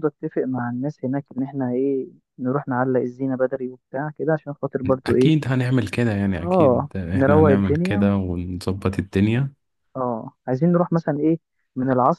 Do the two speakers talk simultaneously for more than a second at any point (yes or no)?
yes